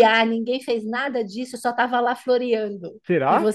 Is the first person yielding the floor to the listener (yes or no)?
no